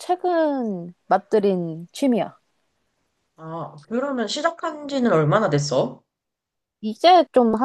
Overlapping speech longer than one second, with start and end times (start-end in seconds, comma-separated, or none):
none